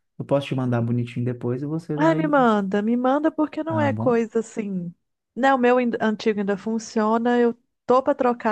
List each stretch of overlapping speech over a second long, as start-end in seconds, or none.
none